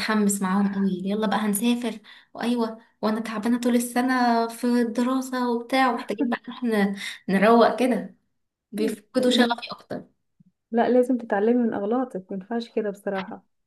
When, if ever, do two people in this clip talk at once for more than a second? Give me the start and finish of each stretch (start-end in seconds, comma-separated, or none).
none